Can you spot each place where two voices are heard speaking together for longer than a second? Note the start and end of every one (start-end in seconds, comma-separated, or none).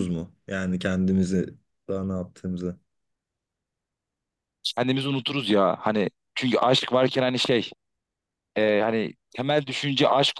none